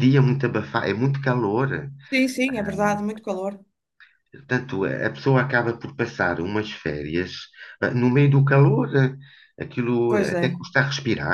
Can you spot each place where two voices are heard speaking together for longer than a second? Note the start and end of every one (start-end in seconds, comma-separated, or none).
none